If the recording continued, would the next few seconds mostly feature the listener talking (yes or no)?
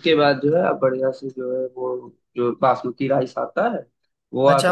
yes